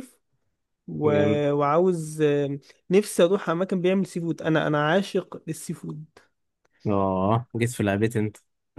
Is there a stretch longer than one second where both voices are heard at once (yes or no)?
no